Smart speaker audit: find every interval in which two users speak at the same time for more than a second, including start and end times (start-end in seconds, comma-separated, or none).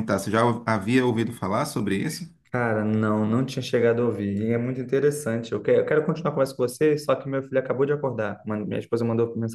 none